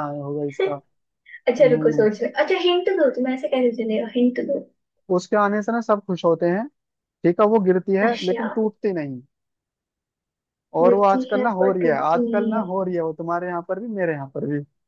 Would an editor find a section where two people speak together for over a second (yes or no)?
yes